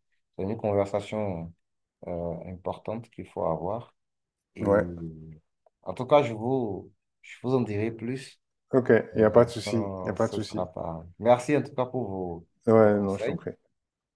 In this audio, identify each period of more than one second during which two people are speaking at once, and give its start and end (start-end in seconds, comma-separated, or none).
9.1-10.7